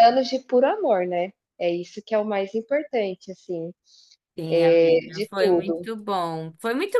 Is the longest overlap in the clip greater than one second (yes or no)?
yes